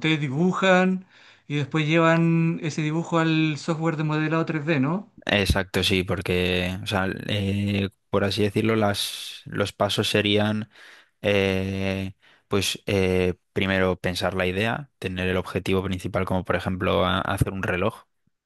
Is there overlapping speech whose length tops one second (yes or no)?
no